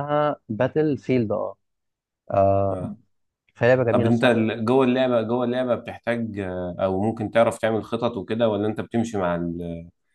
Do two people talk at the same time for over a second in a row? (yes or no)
no